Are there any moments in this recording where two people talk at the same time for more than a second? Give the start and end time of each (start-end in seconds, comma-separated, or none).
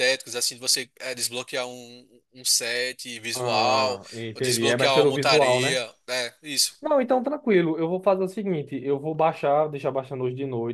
3.3-5.8